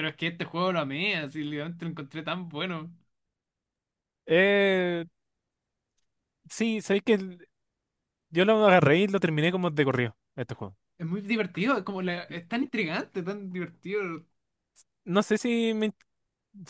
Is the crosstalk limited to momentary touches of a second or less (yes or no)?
yes